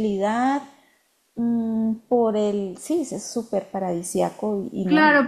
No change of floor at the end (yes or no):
no